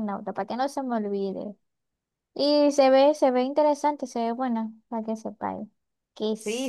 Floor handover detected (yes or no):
yes